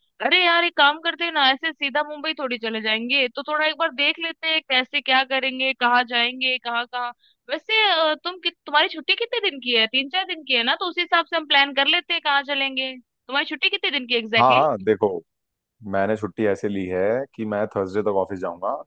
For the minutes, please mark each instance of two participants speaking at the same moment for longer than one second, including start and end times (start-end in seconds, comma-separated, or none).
none